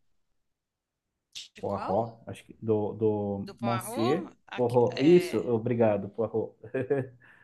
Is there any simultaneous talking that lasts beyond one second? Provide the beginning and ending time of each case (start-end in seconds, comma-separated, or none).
3.5-5.4